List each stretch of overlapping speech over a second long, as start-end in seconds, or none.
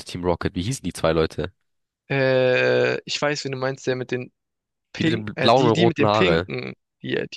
5.0-6.5